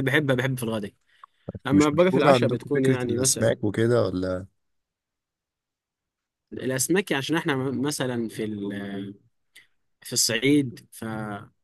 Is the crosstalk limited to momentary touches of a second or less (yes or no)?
no